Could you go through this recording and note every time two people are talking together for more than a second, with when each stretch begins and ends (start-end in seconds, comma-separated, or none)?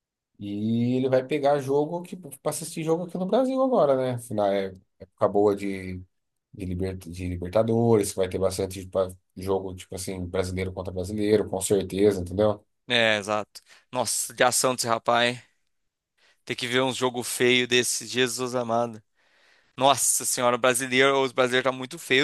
none